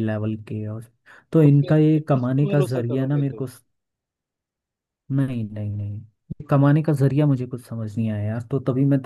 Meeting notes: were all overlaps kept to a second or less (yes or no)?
no